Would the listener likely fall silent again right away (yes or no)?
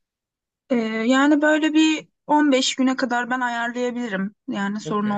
no